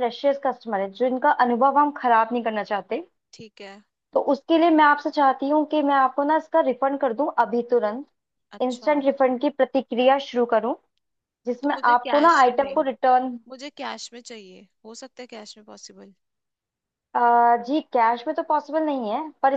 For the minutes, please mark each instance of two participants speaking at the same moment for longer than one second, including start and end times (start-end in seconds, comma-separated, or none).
11.6-12.9